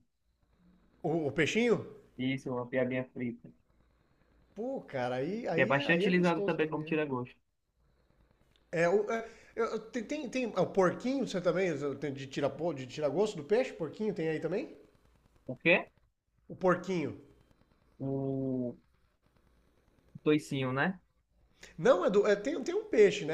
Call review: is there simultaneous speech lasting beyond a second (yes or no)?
yes